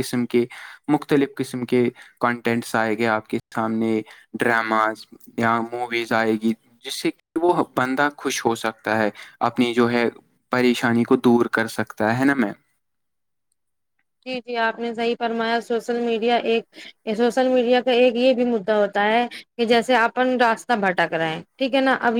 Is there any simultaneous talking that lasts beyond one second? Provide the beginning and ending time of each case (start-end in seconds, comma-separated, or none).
none